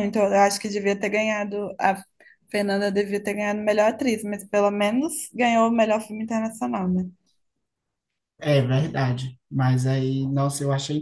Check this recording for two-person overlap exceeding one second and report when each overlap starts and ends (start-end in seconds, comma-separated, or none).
none